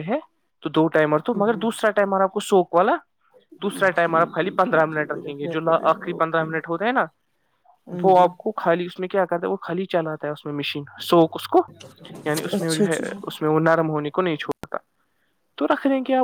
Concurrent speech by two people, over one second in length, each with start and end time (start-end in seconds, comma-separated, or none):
4.0-6.5